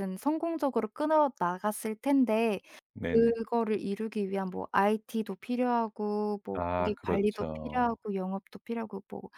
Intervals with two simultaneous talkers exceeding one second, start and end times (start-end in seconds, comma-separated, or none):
6.5-8.0